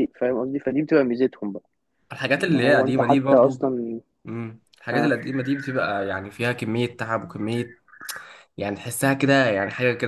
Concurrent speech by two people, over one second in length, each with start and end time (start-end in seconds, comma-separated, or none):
2.4-3.7